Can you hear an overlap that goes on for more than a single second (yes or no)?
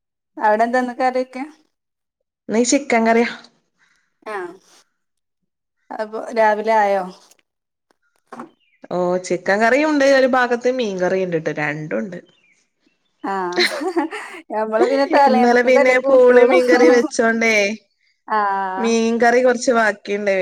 yes